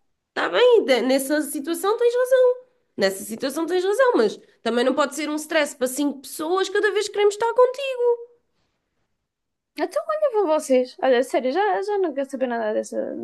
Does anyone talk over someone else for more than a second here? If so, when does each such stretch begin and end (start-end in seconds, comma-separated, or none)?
none